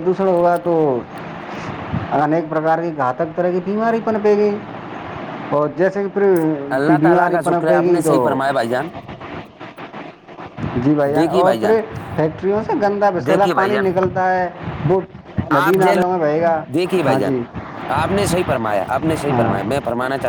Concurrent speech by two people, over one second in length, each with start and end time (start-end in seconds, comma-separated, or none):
none